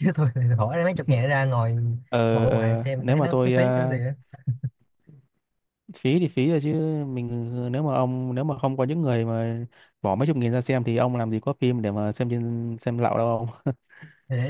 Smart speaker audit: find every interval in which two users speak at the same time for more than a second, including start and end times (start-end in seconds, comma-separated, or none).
2.3-4.0